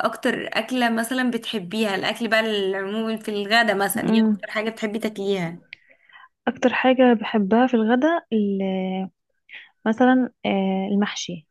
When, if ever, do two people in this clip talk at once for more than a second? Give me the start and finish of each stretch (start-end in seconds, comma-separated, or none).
none